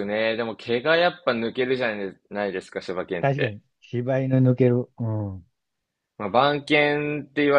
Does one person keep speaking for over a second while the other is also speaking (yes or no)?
no